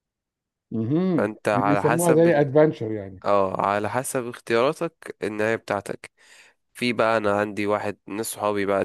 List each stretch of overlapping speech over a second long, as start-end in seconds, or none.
1.2-2.5